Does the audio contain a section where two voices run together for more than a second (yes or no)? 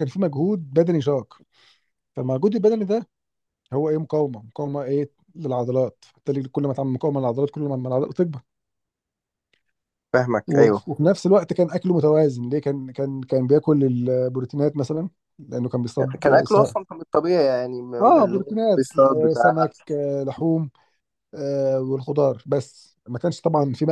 yes